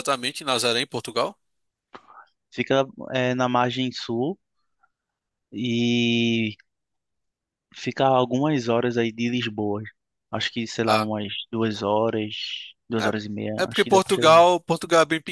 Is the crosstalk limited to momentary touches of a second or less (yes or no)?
no